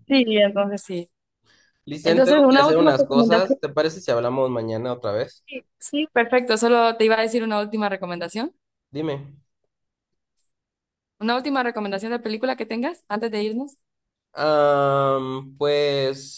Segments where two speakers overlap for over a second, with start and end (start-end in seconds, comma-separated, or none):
2.0-3.6